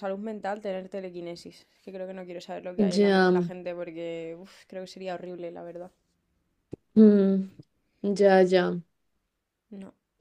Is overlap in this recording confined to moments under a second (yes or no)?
yes